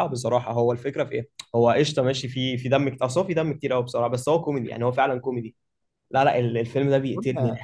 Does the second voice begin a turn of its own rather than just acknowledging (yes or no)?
yes